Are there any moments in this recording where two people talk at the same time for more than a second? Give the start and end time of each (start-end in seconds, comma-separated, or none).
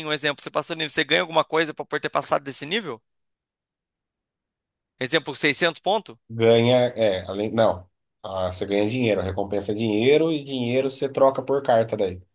none